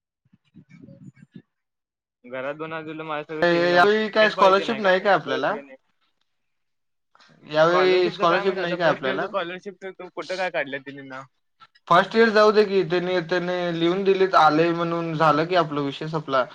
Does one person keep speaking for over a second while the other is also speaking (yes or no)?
yes